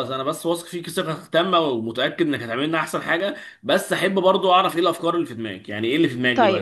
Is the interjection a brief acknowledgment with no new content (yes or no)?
no